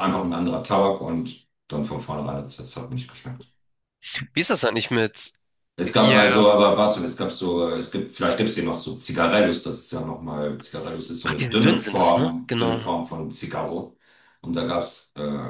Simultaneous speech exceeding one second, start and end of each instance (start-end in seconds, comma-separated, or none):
11.2-12.9